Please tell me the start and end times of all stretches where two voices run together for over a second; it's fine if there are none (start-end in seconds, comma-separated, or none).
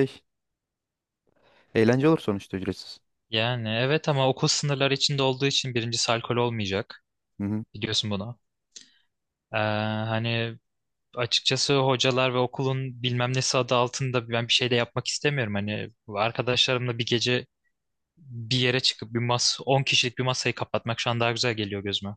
none